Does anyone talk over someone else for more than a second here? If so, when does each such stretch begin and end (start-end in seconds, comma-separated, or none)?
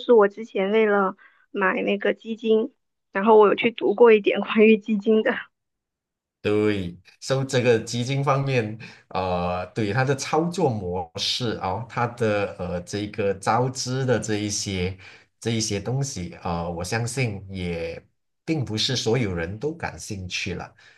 none